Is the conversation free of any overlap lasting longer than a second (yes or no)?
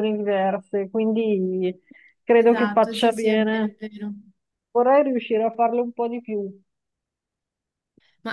no